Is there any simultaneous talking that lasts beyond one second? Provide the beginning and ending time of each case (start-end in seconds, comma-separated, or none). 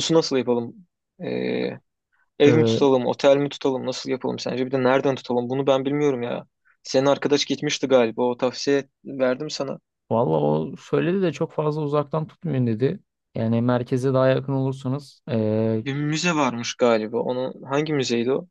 none